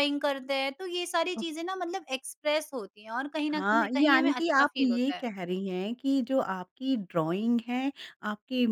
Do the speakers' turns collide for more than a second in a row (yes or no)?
yes